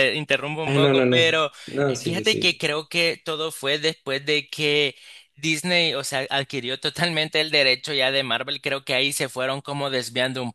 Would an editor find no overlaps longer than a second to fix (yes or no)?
no